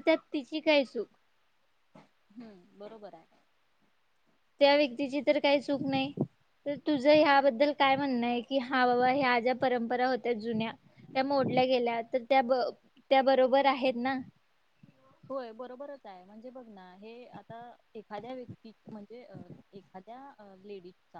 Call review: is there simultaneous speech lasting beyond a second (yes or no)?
no